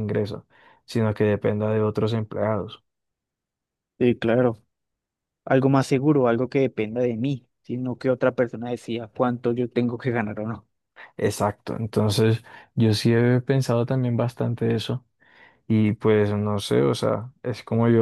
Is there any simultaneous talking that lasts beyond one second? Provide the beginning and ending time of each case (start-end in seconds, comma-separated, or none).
none